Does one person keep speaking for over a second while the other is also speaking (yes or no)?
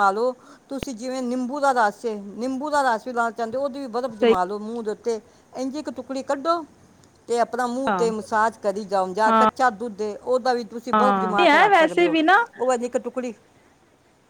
yes